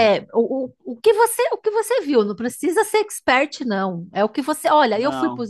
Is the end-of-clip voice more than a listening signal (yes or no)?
no